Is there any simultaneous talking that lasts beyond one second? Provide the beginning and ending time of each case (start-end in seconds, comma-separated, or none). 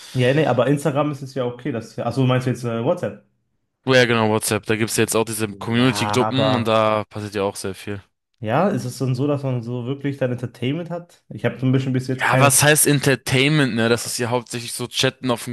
5.5-6.8